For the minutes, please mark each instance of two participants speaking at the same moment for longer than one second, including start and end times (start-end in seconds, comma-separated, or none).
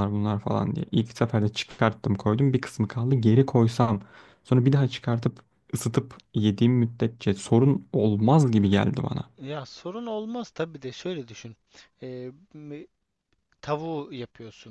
none